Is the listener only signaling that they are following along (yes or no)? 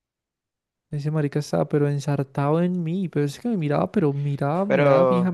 no